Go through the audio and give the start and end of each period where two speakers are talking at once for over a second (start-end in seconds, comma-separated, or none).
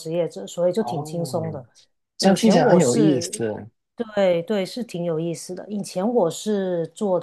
2.2-3.4